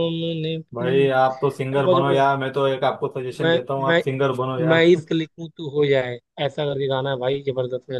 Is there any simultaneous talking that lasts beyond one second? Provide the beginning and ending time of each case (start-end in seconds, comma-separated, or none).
0.7-2.3